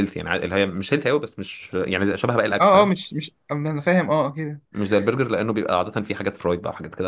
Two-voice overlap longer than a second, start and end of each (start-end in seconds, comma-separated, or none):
none